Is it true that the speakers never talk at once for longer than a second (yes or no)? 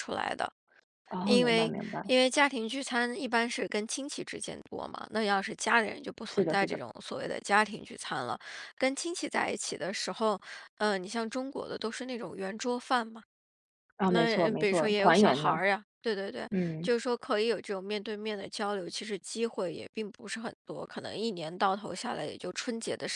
no